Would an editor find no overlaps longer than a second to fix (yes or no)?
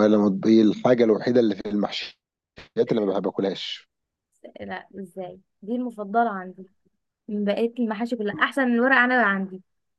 yes